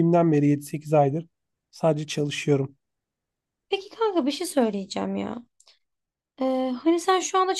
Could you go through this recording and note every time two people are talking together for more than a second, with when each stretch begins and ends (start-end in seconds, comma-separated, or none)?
none